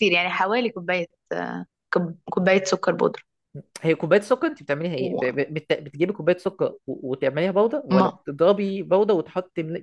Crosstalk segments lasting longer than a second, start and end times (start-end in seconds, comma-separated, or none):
none